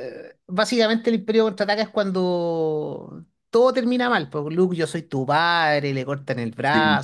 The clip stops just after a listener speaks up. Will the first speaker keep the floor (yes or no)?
yes